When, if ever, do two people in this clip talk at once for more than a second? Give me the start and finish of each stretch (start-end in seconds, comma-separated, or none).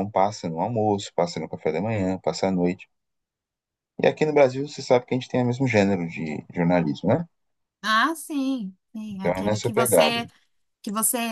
9.1-10.3